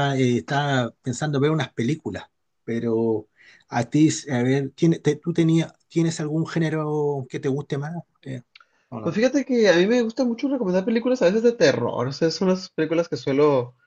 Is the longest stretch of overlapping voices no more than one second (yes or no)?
yes